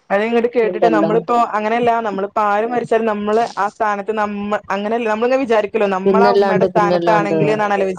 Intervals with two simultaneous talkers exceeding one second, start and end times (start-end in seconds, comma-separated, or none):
6.0-7.3